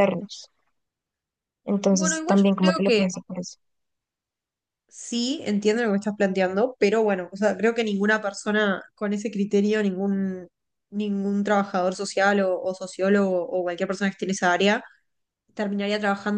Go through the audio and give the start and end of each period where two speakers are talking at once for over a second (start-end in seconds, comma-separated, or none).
1.9-3.1